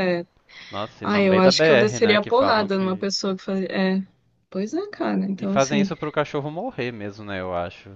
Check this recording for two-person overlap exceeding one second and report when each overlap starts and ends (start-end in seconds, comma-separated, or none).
1.0-3.1